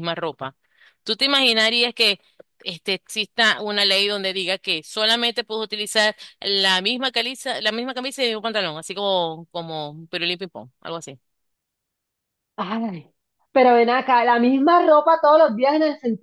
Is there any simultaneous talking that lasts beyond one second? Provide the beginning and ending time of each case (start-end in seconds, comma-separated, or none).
none